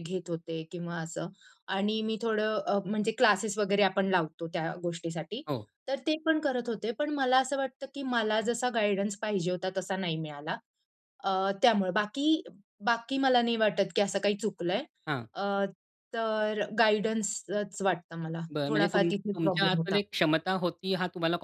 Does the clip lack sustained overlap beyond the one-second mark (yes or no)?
no